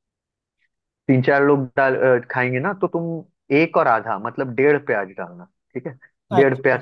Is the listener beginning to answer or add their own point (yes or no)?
no